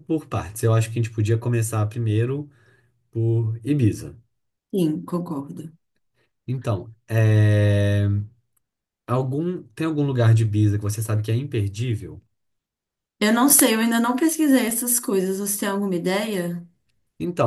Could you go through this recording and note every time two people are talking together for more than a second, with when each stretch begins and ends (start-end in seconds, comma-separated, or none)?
none